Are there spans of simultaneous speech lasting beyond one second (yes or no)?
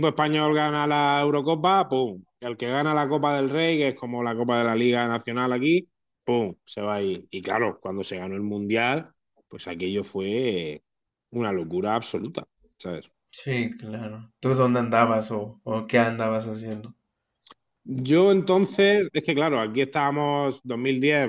no